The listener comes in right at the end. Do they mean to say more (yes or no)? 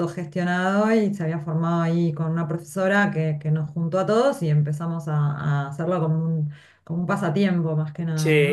yes